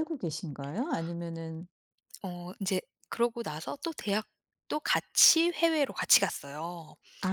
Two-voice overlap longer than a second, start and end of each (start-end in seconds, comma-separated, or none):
none